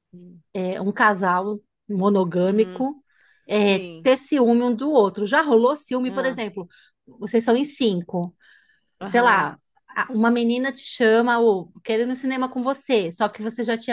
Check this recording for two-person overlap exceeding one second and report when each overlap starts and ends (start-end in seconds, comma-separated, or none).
none